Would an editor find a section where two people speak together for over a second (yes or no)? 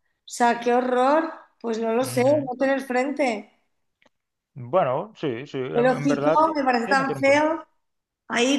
yes